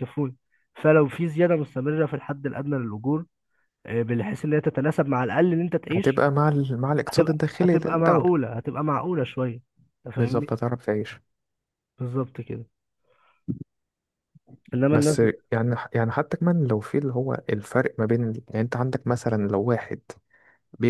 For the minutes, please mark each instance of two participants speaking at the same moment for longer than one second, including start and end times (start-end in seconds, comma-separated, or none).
7.1-8.3